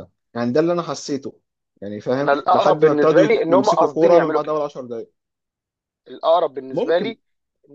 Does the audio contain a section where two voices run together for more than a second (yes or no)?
yes